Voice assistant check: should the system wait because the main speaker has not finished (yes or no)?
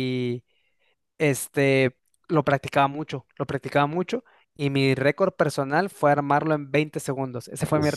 yes